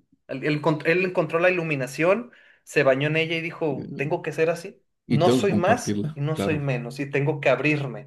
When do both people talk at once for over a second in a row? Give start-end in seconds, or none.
5.1-6.7